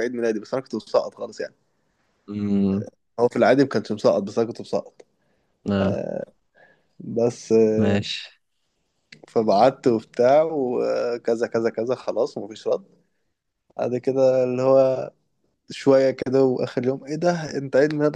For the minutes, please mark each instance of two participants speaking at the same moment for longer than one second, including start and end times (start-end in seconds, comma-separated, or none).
none